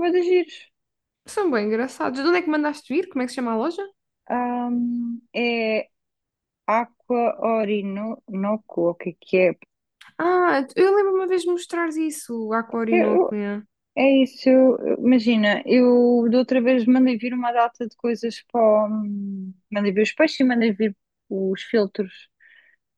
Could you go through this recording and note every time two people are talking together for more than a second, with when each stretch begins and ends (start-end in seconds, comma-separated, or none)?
none